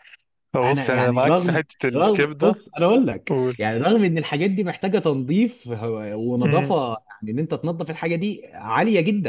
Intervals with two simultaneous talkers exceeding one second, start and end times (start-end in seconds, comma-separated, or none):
0.6-2.5